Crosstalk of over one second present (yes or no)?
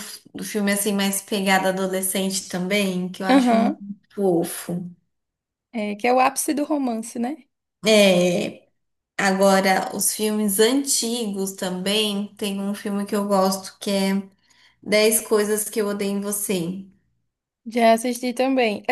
no